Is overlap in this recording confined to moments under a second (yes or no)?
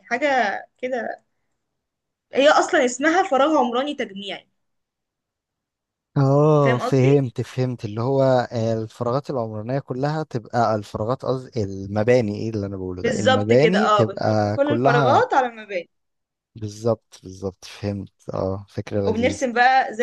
no